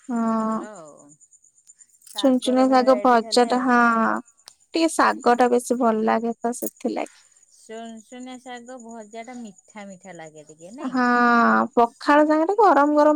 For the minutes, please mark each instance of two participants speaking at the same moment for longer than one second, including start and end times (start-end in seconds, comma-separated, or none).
2.2-3.7